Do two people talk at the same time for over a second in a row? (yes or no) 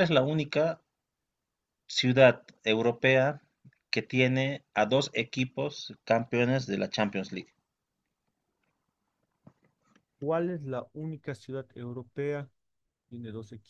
no